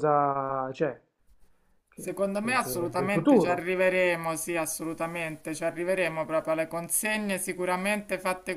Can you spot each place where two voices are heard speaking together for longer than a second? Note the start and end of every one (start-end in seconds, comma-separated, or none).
2.0-3.7